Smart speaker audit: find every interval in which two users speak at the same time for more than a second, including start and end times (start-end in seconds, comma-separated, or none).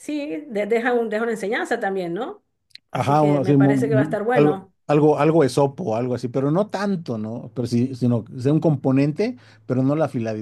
2.9-4.7